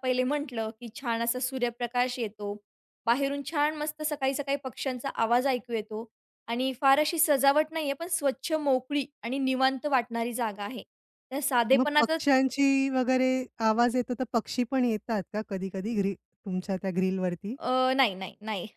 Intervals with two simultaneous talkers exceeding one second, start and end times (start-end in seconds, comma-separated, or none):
none